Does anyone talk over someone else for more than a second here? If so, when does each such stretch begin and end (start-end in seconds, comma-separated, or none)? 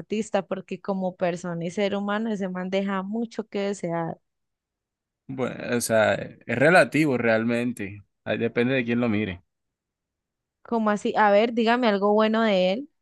none